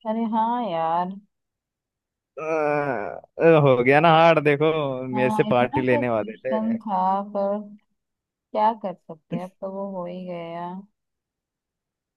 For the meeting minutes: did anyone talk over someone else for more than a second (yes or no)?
yes